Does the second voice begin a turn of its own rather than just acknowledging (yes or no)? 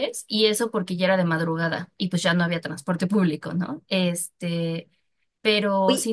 no